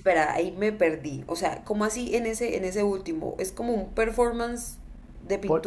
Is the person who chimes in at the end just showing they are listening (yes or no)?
no